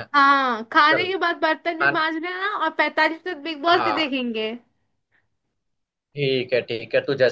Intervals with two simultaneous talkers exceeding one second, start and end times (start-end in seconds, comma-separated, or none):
none